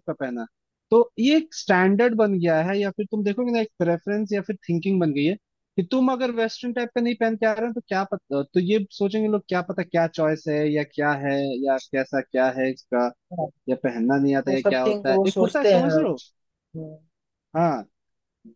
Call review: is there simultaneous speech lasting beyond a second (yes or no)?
yes